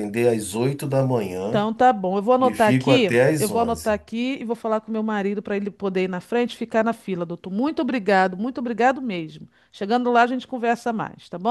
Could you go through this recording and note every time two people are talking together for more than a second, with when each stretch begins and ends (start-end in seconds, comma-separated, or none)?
2.4-4.0